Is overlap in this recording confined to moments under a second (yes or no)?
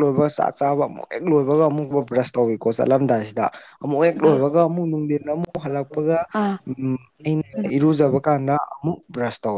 no